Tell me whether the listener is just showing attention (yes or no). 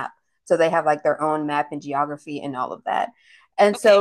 yes